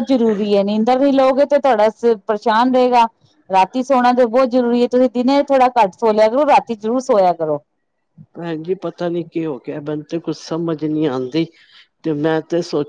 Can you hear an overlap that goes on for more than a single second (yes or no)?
no